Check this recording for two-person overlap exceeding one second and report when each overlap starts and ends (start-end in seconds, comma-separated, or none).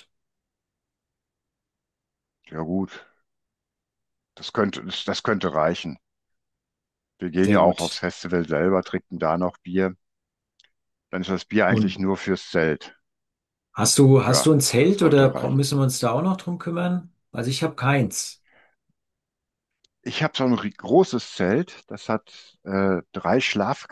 14.2-15.6